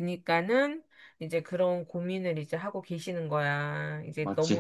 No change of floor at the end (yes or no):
yes